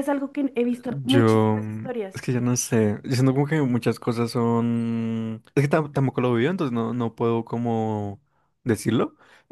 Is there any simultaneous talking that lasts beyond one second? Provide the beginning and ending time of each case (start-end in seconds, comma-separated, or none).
1.0-2.3